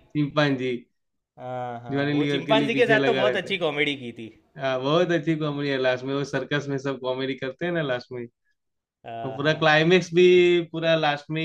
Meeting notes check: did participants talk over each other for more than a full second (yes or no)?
yes